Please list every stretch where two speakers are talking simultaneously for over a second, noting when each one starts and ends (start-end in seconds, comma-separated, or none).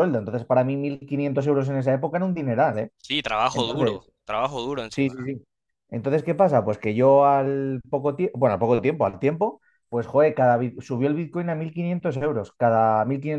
none